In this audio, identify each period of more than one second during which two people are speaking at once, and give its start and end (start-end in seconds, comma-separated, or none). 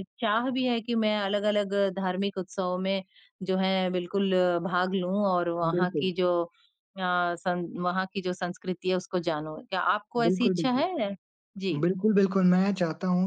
none